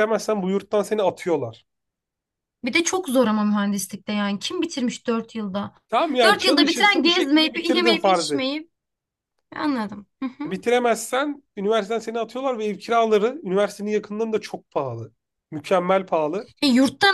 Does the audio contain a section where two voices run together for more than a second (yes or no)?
yes